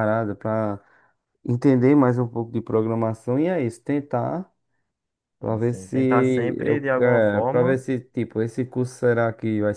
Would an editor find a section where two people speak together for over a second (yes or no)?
yes